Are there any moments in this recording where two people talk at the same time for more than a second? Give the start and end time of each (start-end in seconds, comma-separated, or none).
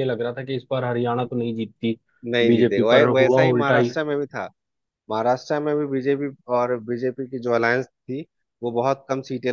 2.5-3.9